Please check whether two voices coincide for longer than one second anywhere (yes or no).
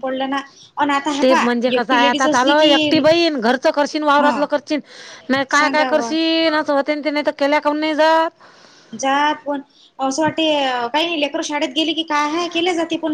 yes